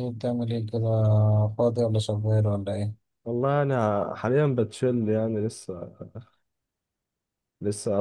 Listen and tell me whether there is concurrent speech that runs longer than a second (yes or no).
no